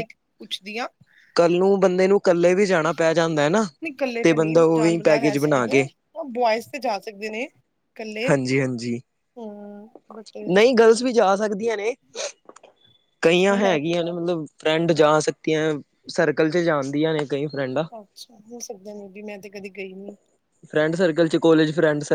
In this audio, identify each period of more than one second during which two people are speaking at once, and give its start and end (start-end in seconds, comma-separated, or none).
4.4-5.8